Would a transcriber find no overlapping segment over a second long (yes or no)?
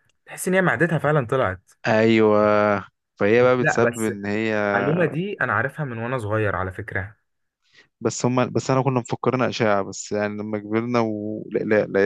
yes